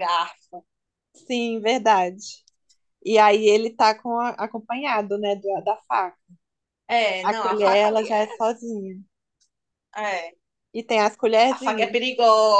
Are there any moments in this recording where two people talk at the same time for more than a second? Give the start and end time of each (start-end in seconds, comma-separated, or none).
7.2-8.5